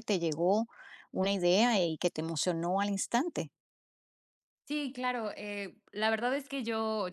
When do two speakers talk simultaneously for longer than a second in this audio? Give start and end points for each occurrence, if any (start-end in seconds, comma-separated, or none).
none